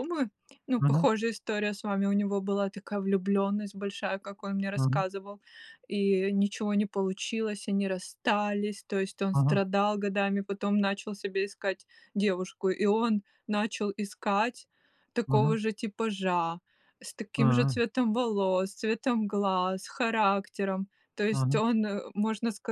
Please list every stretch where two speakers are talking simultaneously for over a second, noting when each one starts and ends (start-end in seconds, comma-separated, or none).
none